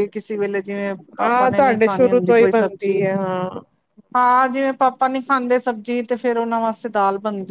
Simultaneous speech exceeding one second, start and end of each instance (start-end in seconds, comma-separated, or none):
1.2-3.0